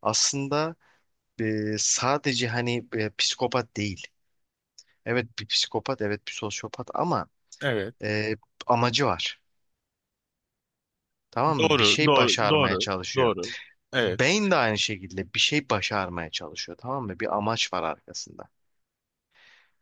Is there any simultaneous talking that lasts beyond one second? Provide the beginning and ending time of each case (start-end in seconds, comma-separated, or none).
11.6-13.3